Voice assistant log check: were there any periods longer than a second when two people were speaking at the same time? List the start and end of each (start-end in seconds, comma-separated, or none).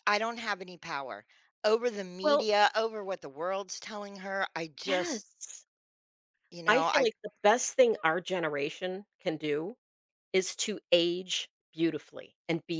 none